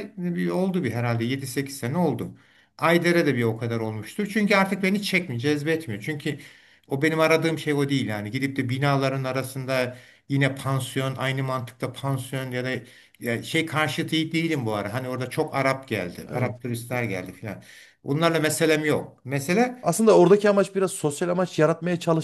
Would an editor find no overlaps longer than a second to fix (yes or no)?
yes